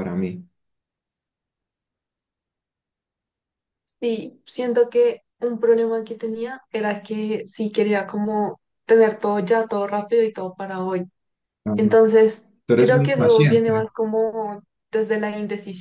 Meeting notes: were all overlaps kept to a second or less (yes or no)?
no